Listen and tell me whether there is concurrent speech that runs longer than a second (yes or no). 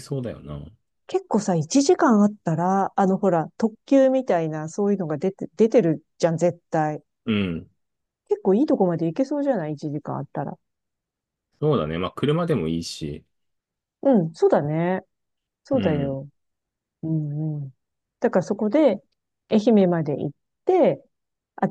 no